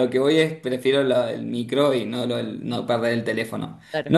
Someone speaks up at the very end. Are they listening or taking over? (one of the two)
listening